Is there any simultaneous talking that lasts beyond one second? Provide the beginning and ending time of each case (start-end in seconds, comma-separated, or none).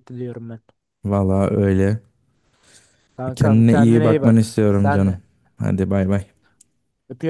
3.4-5.2